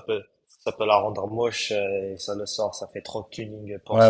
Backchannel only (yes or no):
no